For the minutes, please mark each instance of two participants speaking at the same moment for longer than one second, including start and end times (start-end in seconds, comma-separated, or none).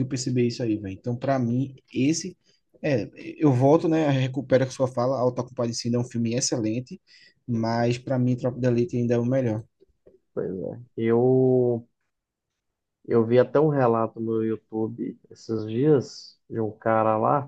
none